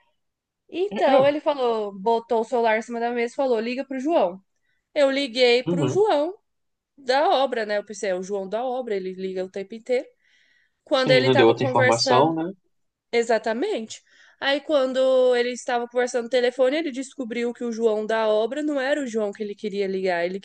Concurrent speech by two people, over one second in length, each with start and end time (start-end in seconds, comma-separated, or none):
10.9-12.3